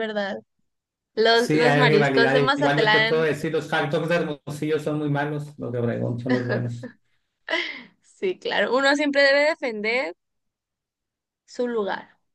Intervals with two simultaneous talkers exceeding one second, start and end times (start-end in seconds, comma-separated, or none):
1.3-3.3